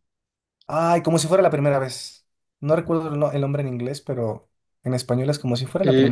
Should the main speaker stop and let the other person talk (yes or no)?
yes